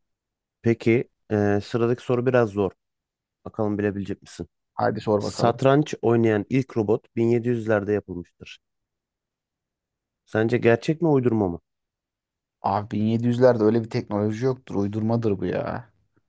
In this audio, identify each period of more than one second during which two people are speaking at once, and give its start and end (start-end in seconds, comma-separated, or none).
none